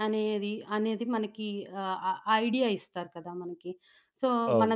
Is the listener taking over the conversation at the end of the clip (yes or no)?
no